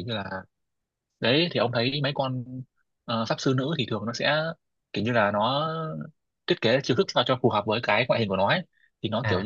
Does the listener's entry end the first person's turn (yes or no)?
no